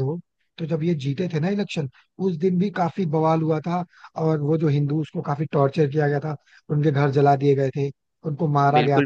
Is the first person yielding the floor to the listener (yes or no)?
yes